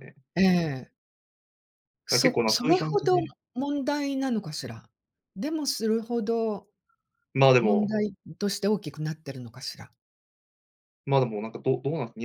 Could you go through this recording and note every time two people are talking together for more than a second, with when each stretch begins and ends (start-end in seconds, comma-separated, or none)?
2.1-3.3